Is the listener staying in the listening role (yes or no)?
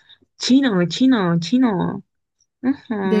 no